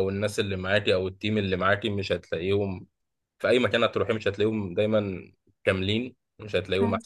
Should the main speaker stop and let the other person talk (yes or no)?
no